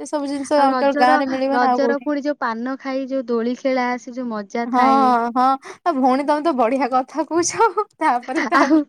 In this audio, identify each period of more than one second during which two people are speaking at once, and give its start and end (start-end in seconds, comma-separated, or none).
none